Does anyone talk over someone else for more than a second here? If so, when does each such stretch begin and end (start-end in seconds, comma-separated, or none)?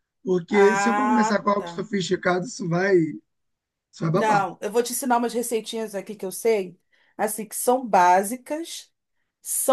0.5-1.8